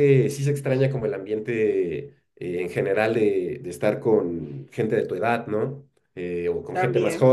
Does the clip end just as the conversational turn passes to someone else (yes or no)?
no